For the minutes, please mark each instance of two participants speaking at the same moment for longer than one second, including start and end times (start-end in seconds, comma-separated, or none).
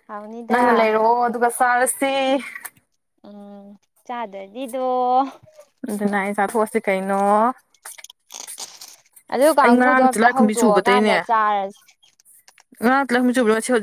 9.6-11.2